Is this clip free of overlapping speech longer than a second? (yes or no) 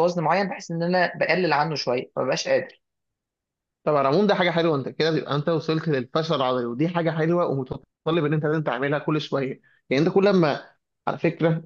yes